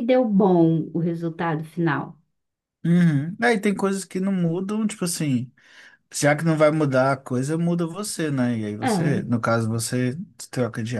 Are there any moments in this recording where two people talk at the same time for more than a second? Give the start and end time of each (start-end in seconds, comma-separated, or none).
none